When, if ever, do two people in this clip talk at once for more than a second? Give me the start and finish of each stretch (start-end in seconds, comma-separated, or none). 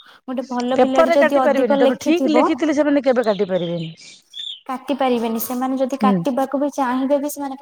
0.8-2.4